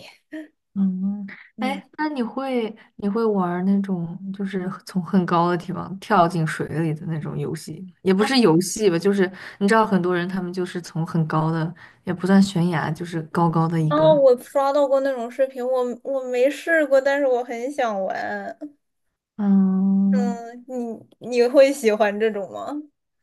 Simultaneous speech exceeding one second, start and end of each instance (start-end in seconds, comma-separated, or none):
none